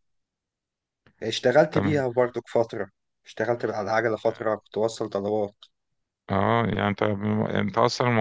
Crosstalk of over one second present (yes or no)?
no